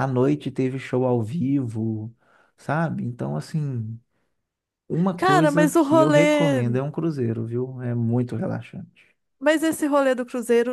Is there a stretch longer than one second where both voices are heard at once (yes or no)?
yes